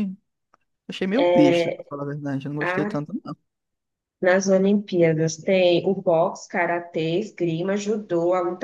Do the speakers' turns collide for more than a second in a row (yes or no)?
no